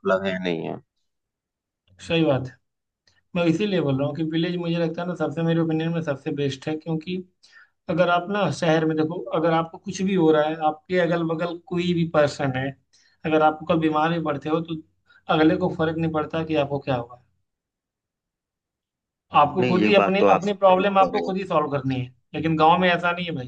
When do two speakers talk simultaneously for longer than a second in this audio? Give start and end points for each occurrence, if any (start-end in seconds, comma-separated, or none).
19.6-21.3